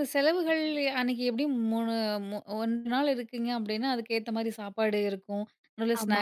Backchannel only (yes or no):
yes